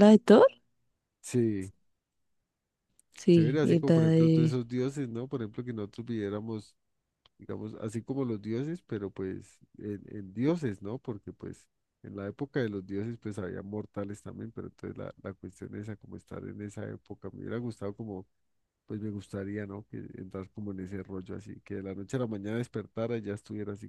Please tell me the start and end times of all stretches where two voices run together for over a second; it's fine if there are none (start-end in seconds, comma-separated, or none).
3.3-4.6